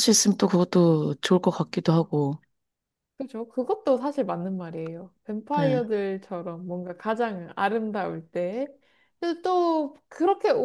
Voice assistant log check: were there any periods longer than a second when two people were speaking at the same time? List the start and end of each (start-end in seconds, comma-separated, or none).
none